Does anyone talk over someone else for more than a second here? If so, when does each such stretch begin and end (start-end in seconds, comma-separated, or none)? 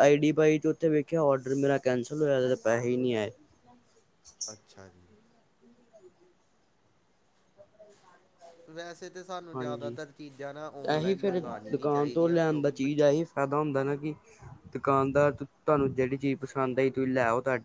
11.0-12.9